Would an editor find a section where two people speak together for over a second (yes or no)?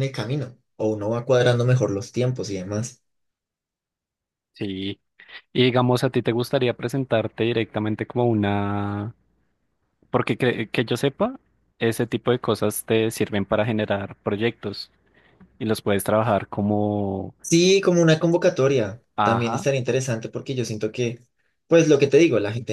no